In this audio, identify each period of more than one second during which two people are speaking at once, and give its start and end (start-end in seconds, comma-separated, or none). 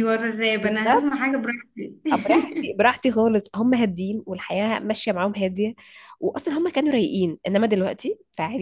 none